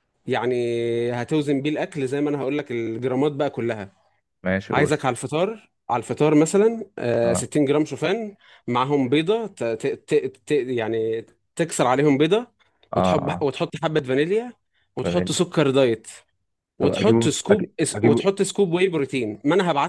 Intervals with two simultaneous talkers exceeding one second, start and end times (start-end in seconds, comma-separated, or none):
16.8-18.3